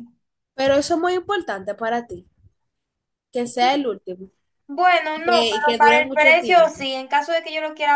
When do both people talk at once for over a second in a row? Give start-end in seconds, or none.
5.1-6.8